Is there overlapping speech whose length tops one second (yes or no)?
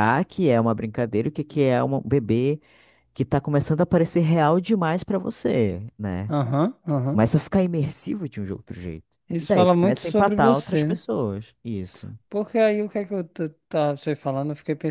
yes